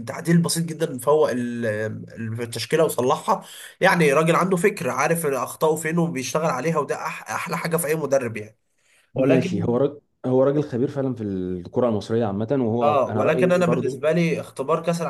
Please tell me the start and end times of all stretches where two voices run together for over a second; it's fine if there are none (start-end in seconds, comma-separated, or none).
12.8-14.1